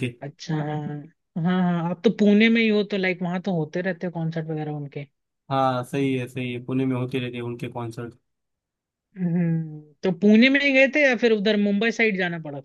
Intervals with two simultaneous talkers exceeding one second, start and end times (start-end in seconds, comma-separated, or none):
none